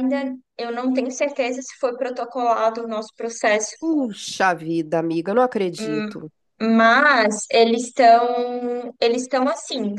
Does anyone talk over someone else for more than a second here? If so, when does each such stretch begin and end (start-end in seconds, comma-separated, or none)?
none